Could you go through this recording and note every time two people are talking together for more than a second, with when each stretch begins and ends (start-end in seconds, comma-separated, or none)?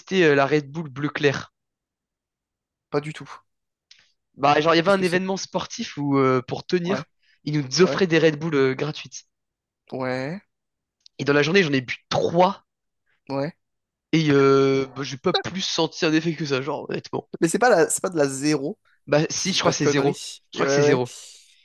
19.3-21.0